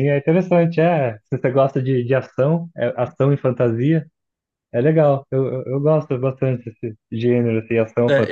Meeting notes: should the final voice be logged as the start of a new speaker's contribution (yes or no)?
yes